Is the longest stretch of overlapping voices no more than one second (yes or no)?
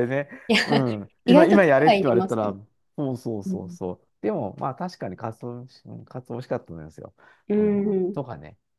no